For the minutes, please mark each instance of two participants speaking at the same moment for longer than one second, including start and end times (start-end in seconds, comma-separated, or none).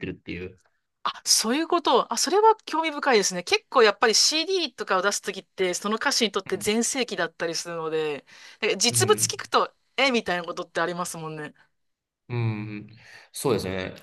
none